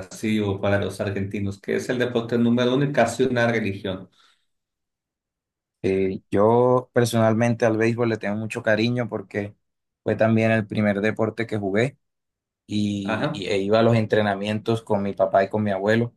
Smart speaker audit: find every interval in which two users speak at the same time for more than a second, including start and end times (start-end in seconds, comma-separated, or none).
none